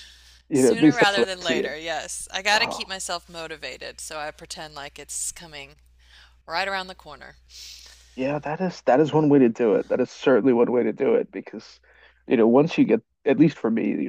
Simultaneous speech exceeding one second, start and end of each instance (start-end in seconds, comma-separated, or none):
0.5-1.7